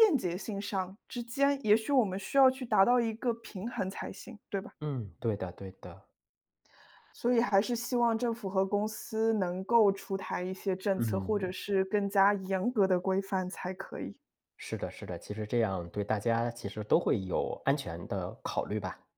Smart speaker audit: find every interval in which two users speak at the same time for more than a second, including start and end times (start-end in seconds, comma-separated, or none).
none